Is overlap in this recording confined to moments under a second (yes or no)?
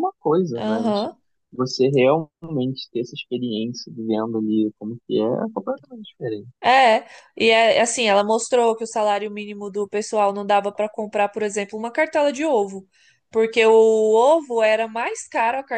yes